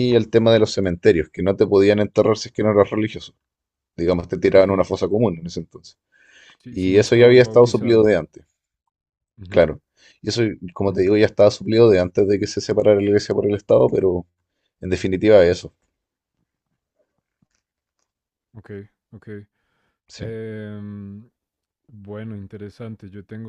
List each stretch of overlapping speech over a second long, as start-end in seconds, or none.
6.7-8.1